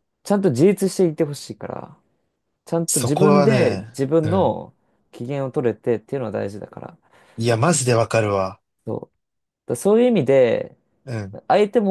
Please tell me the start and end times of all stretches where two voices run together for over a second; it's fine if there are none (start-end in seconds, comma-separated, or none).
2.9-4.5